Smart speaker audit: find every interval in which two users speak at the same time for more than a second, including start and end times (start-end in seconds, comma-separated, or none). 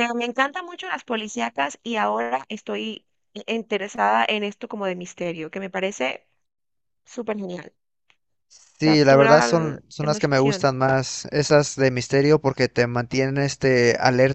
8.8-10.7